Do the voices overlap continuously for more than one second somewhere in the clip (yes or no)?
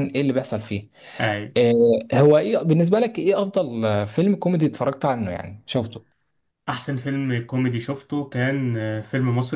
no